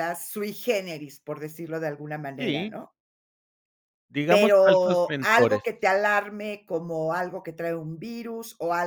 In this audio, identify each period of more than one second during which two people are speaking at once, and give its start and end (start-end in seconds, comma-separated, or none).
4.3-5.7